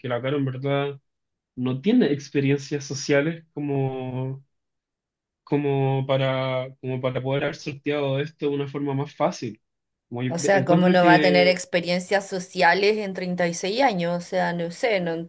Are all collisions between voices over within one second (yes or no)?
no